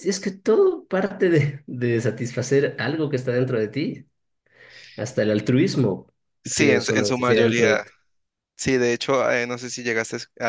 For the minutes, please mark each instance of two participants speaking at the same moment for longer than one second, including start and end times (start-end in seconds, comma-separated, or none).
6.5-7.8